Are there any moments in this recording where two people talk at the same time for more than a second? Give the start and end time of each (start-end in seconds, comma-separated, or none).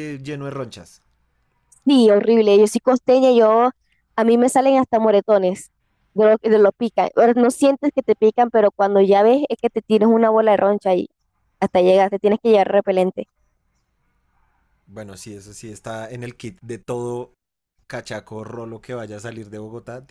none